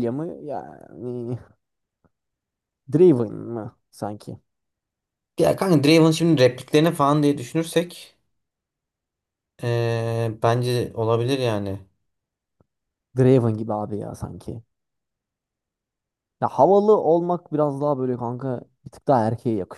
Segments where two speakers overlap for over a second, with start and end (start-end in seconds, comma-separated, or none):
none